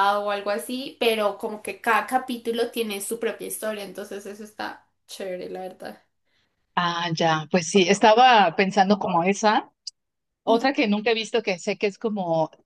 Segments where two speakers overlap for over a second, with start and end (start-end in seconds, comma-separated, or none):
none